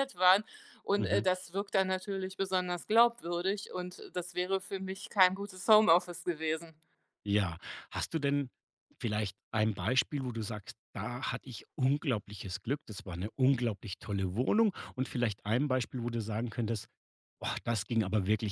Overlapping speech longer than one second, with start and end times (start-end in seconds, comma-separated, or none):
none